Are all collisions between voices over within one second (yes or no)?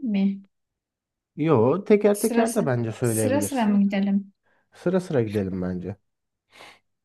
no